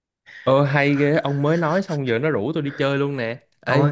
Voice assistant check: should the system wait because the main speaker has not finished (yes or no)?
yes